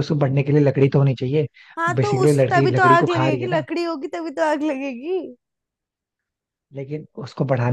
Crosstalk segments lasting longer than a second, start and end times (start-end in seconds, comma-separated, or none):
2.0-3.6